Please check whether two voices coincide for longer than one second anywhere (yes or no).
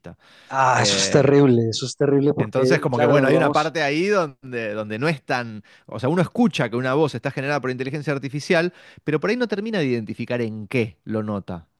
yes